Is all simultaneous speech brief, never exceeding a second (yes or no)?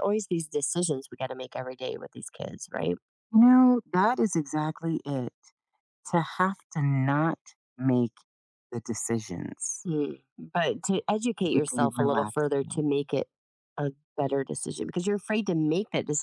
no